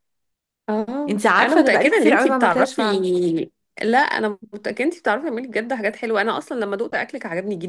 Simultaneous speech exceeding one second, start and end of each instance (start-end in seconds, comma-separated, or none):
1.1-3.1